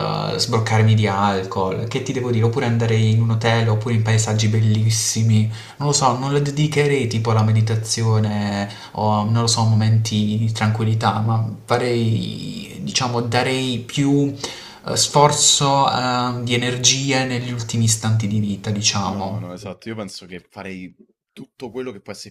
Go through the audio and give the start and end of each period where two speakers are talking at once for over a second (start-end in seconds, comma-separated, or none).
none